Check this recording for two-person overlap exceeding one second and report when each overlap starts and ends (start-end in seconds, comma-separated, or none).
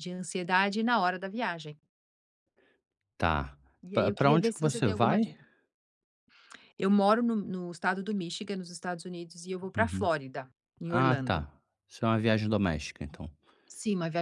3.9-5.4